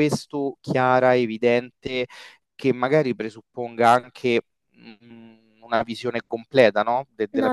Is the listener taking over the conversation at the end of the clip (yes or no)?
yes